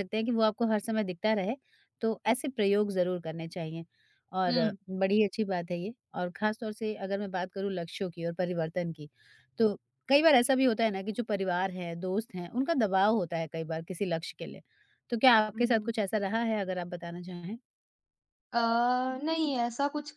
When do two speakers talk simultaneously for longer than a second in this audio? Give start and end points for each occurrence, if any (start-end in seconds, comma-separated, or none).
none